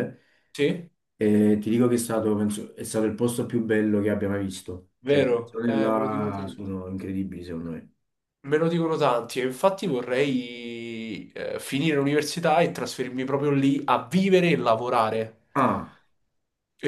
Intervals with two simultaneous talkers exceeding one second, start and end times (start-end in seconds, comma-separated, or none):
5.0-6.7